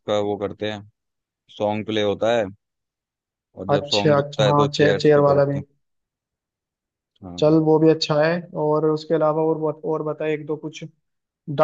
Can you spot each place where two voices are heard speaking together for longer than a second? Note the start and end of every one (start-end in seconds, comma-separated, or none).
3.7-5.6